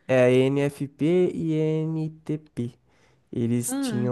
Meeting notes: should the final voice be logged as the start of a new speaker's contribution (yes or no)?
no